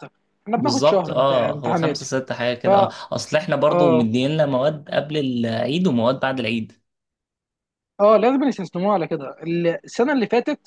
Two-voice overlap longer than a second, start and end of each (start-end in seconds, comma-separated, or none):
0.6-2.0